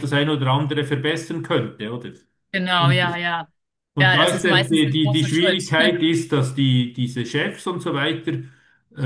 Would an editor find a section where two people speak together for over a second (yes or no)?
yes